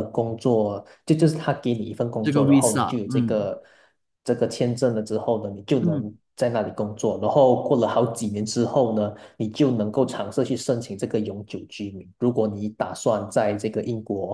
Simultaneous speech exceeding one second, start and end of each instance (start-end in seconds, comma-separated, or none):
2.2-3.5